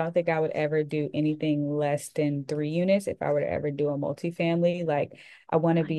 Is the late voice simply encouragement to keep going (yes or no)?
yes